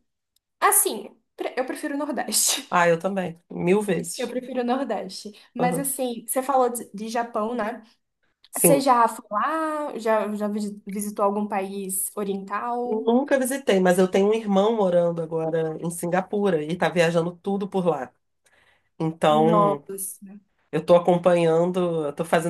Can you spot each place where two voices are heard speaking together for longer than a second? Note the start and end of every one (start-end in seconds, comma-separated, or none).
none